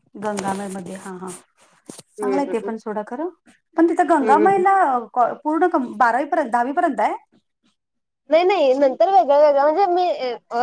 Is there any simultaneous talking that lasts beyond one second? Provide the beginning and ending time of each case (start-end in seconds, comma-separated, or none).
none